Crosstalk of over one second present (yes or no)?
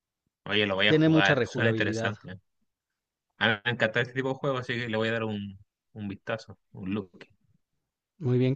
yes